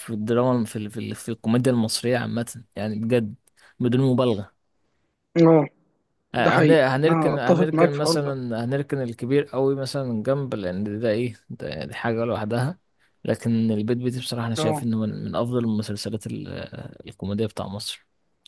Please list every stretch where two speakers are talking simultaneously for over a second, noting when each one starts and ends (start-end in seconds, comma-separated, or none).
6.4-8.3